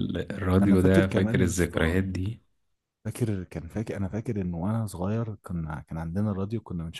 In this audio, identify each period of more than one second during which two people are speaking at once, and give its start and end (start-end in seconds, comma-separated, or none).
0.6-2.0